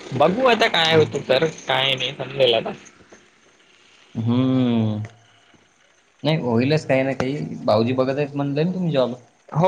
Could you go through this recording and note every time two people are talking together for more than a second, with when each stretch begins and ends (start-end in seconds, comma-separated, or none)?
none